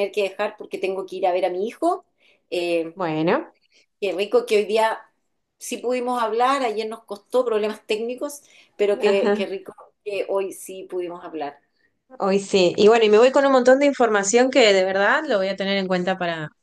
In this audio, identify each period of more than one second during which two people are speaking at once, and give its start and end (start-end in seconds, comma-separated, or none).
none